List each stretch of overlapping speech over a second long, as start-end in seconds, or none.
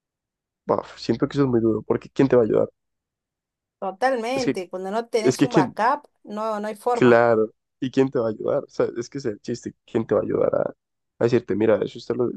none